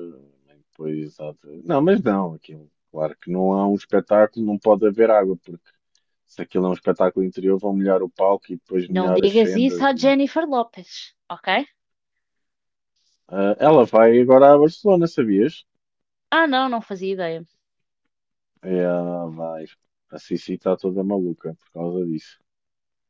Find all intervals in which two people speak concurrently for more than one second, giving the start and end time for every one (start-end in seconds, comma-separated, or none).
8.8-10.2